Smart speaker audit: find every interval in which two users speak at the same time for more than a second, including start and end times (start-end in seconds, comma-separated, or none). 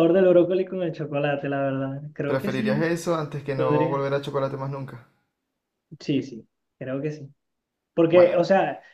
none